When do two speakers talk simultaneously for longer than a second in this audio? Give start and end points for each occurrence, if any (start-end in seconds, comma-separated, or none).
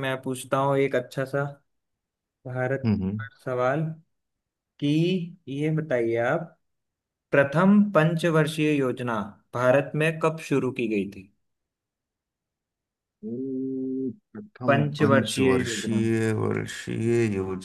14.7-16.1